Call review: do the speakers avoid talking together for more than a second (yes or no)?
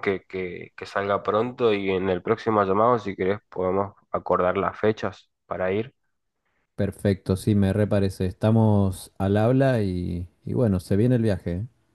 yes